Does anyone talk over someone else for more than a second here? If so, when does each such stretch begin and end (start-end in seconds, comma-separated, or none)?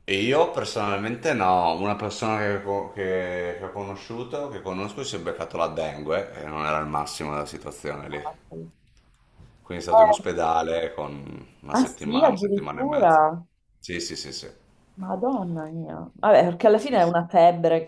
11.7-13.2